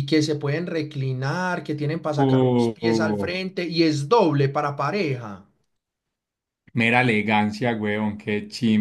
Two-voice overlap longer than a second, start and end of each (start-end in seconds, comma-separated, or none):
2.2-3.4